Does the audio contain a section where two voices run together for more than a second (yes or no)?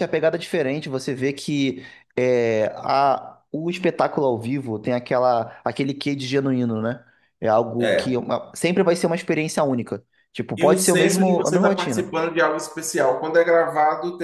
yes